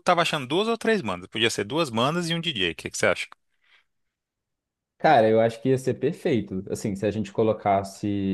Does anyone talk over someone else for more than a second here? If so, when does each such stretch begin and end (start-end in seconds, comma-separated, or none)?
none